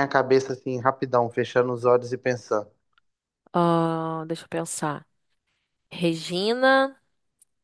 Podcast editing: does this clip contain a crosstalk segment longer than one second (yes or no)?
no